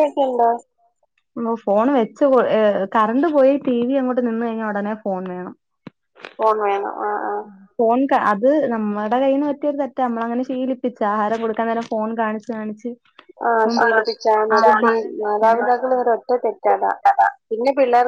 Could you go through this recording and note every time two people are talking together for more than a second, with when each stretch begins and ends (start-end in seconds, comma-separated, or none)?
13.6-16.9